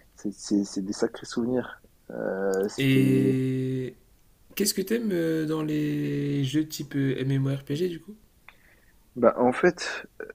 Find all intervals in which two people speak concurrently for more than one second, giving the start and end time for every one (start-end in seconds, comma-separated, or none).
none